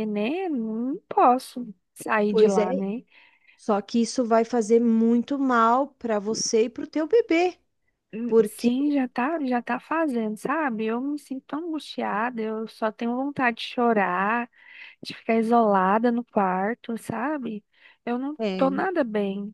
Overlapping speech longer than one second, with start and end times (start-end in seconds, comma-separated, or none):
none